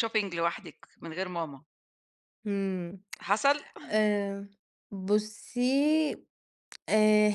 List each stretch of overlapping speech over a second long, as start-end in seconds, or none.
none